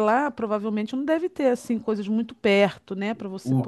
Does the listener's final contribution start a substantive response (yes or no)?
yes